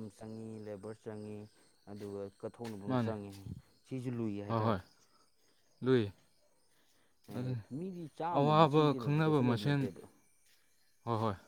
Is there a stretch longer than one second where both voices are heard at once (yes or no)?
yes